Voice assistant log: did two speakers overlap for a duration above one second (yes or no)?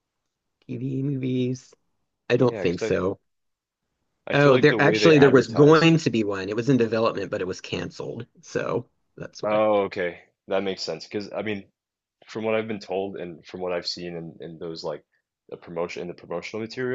yes